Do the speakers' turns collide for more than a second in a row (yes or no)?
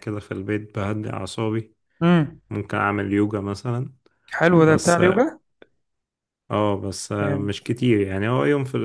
no